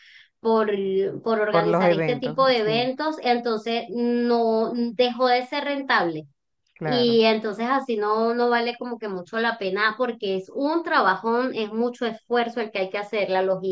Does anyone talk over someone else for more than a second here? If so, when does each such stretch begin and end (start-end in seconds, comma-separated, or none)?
1.5-2.9